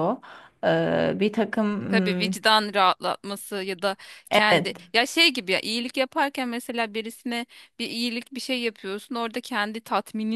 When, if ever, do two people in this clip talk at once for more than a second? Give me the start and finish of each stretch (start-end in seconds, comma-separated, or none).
none